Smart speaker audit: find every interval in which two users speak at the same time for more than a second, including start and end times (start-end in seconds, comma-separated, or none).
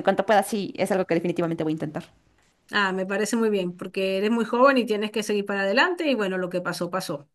none